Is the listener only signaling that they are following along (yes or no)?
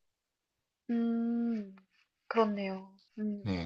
no